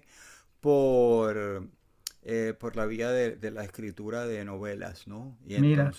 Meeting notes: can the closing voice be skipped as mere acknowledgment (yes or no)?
yes